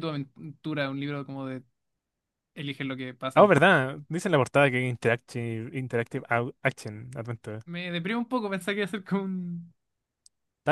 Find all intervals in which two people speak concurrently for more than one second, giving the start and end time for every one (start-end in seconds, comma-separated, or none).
none